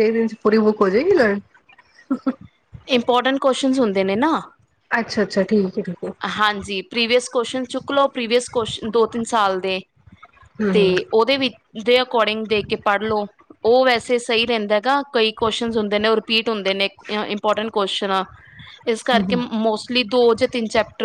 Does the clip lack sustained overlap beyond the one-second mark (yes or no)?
yes